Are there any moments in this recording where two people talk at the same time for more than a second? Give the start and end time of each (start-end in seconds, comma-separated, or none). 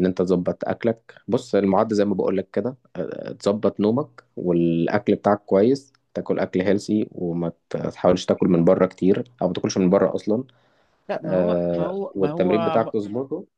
11.2-12.9